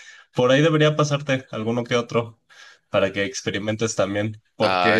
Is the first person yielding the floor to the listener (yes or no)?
no